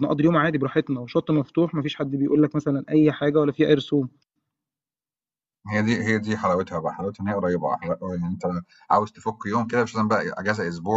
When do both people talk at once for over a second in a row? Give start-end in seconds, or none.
none